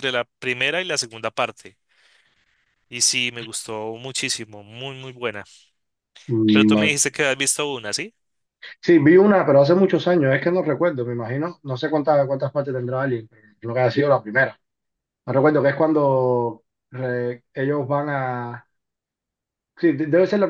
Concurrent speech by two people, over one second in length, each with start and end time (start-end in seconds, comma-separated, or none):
none